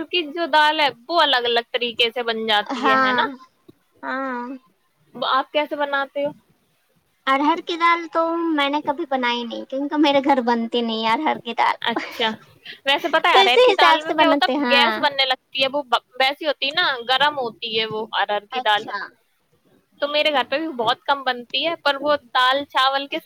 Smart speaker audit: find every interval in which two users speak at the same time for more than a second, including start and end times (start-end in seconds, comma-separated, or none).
13.3-15.1